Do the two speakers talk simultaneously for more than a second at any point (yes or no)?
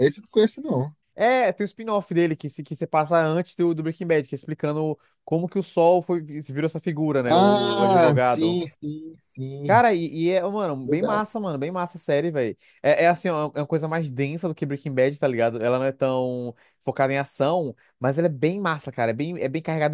yes